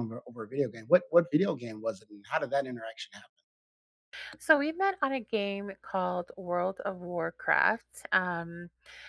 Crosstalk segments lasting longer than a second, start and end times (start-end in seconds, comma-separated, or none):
none